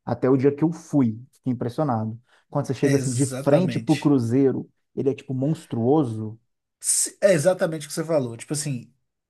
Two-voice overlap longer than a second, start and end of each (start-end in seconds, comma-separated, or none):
2.8-4.1